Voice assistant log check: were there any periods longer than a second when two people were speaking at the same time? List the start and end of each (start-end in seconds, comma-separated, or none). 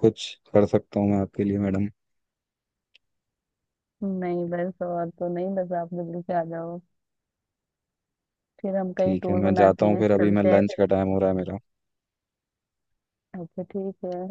9.0-10.8